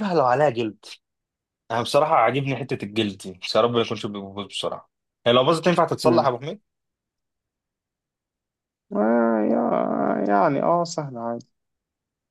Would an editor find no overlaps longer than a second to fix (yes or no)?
yes